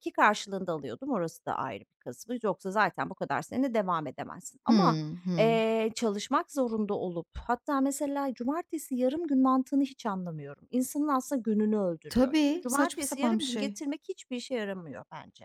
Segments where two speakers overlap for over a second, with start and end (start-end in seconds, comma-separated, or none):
12.1-13.8